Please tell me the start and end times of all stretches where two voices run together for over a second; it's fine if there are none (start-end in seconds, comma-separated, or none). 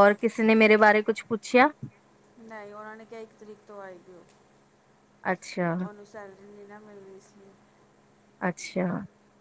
none